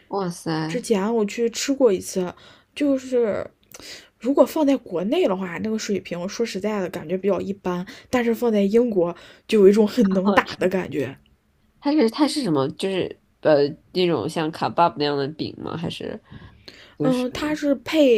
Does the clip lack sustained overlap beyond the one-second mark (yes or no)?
yes